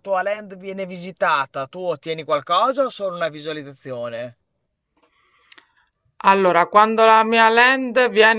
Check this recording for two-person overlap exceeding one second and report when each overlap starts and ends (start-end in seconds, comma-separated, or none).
none